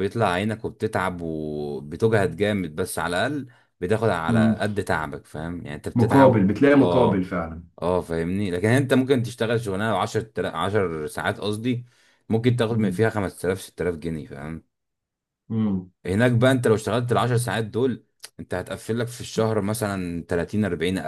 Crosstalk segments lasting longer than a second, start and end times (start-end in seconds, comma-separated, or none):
5.9-7.3